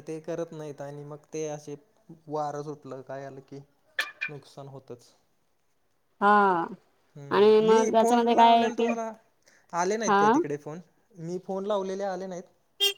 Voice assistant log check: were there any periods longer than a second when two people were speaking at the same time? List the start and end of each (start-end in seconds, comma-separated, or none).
7.3-8.9